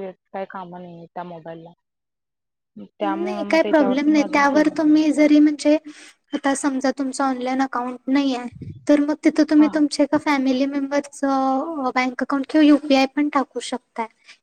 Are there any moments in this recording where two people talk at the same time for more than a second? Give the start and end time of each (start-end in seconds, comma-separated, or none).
3.0-5.0